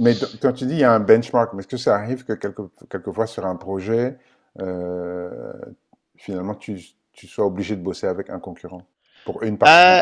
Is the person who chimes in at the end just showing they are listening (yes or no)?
no